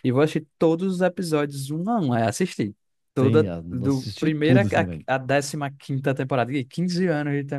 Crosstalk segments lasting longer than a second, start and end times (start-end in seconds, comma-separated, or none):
3.1-4.6